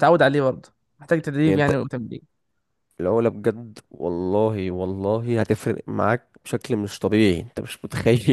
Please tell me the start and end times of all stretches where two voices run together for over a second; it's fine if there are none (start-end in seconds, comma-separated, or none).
none